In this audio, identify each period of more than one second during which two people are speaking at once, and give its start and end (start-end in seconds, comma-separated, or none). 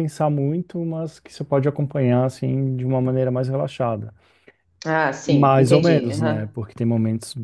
5.2-6.6